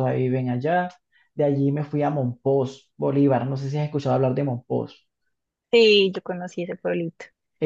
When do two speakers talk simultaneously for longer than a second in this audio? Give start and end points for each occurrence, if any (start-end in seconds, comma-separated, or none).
none